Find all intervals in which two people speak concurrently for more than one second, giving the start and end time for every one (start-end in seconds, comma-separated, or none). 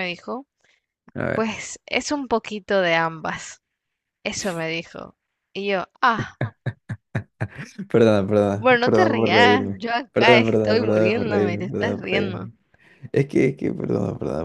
8.6-12.5